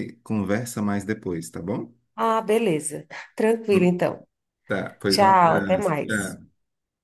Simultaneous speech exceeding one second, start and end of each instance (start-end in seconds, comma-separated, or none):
5.1-6.4